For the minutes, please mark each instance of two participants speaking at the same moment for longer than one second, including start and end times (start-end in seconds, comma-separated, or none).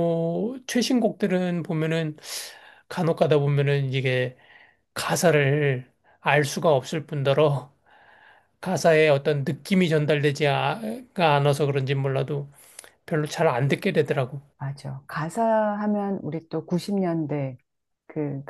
none